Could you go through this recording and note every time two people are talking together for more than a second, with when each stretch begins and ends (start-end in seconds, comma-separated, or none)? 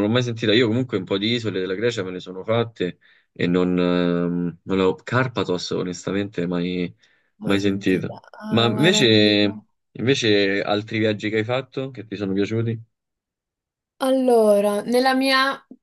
7.4-9.0